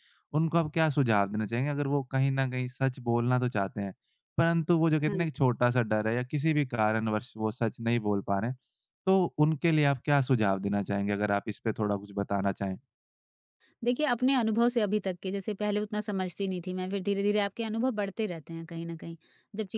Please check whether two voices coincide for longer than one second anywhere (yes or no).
no